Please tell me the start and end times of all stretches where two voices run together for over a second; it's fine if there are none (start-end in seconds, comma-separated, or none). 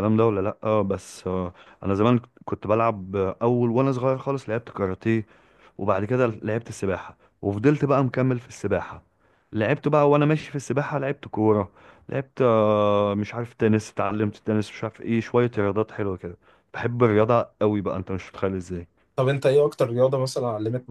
none